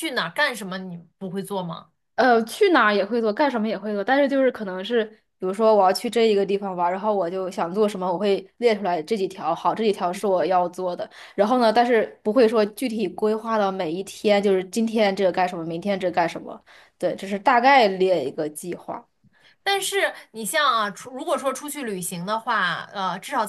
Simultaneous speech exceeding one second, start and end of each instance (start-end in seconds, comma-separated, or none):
none